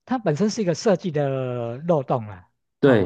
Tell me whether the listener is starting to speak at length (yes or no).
no